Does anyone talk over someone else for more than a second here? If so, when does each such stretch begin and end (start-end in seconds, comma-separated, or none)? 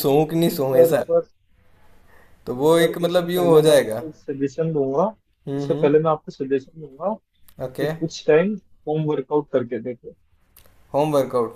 2.8-4.0